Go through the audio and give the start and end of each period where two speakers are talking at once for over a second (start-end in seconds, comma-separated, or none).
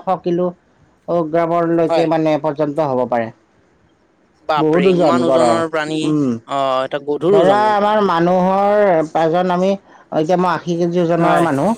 4.6-6.0